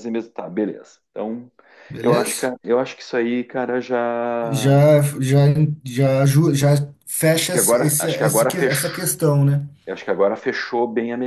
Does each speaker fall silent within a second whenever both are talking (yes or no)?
no